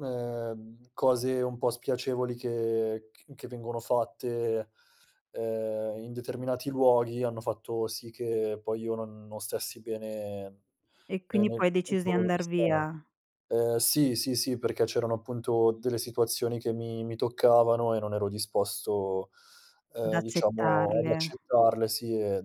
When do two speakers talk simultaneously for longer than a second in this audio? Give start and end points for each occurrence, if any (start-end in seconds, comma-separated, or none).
11.3-12.9, 20.1-21.4